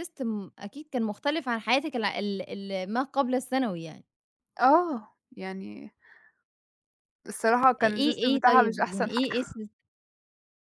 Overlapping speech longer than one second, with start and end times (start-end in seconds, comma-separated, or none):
7.8-9.5